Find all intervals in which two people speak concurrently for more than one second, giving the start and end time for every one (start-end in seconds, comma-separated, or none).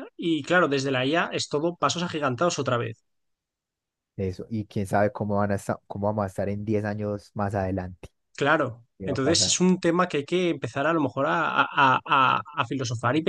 none